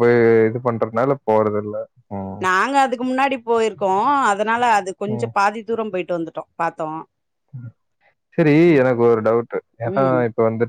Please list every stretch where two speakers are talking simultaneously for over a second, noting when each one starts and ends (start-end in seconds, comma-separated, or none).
none